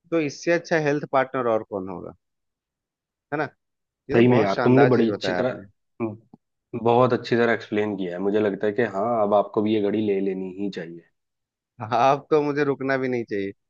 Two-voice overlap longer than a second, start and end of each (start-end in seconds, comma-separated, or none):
4.2-5.6